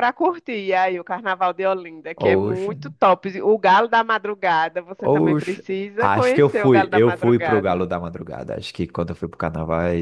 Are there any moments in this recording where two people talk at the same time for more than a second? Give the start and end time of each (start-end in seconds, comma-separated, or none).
5.0-7.9